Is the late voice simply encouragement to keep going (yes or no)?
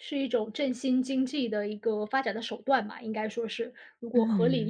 no